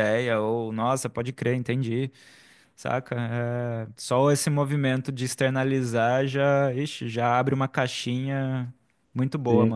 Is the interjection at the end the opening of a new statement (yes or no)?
yes